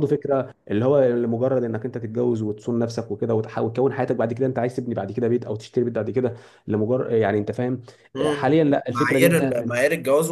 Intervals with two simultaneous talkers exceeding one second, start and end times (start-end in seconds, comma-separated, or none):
8.3-9.8